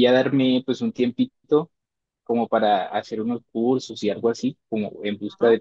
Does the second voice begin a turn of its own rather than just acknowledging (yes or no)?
no